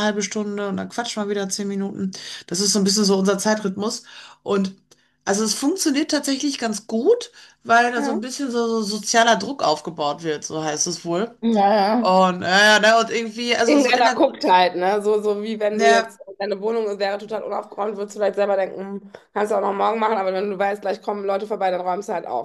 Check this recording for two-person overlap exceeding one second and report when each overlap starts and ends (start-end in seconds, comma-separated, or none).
none